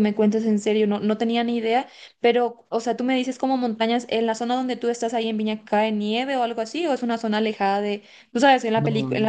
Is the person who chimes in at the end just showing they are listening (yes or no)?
yes